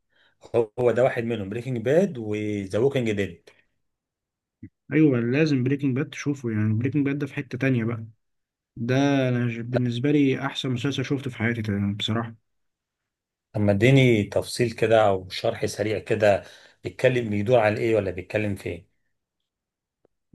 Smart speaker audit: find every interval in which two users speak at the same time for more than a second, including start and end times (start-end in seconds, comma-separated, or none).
none